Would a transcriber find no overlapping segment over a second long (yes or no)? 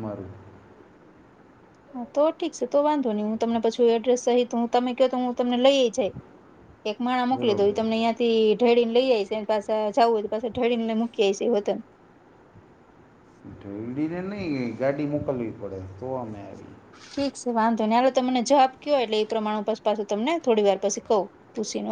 yes